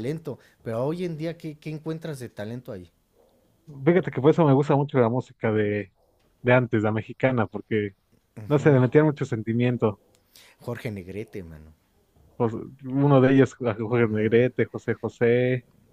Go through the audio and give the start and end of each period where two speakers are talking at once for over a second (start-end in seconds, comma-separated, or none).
none